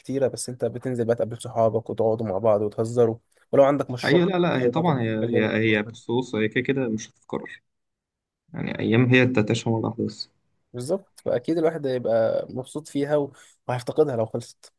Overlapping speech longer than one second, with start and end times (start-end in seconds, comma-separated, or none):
4.0-5.9